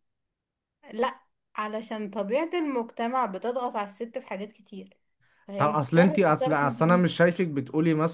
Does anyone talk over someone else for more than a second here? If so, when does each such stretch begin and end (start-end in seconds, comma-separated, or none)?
5.6-7.0